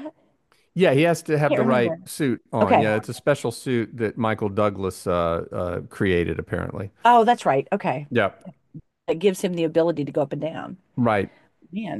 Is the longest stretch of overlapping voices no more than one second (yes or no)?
yes